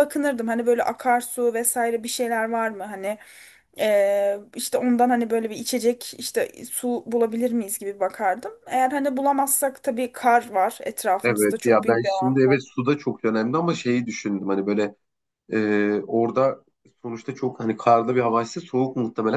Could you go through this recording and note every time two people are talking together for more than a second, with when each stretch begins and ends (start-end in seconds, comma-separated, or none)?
11.2-12.6